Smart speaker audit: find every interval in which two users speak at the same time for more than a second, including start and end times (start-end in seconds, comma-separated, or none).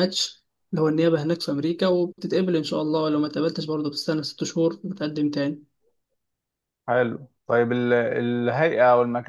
none